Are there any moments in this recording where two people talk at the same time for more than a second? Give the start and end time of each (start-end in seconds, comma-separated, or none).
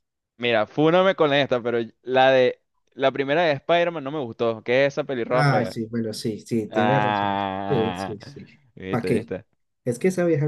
6.7-8.2